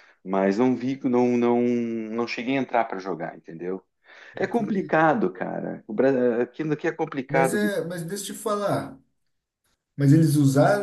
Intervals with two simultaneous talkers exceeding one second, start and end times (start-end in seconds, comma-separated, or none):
none